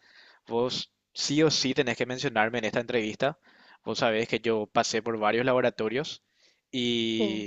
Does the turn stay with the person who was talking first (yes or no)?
yes